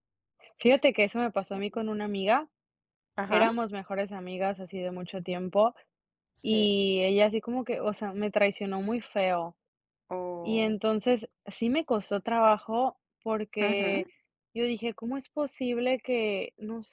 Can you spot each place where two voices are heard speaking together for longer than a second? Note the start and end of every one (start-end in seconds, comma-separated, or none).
none